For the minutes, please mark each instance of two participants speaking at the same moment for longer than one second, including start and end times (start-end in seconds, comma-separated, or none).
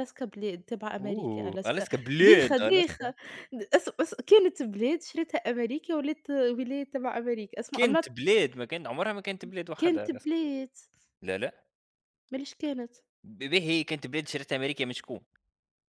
1.0-3.1